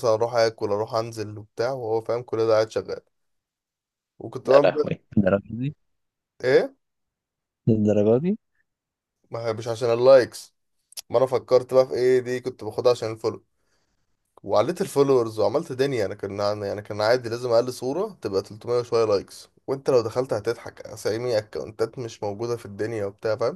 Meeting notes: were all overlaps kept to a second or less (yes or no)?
yes